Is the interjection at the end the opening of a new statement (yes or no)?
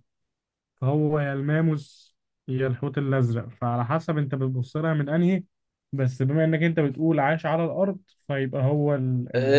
yes